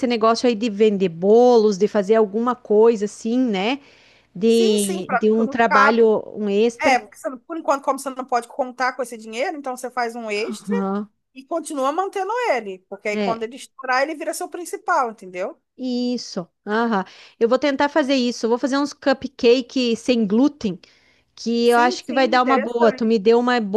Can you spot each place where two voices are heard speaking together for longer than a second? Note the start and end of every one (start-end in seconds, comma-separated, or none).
4.5-6.0, 21.6-23.2